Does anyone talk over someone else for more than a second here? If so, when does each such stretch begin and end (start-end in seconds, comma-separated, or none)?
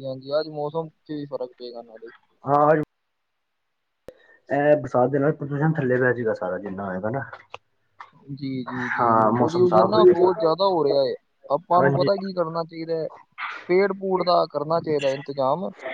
9.0-10.5